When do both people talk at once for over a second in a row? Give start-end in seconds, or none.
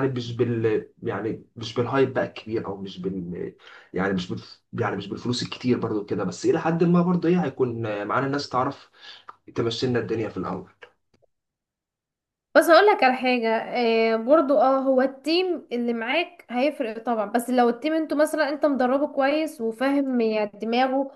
none